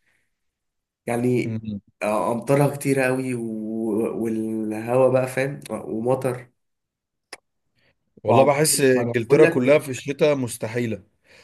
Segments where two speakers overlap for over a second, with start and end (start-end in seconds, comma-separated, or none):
8.3-9.8